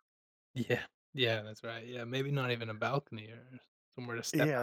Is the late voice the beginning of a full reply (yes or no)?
yes